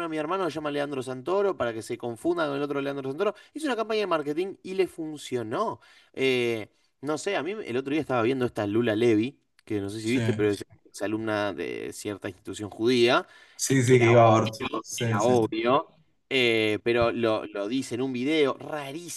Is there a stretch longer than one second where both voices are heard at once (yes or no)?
yes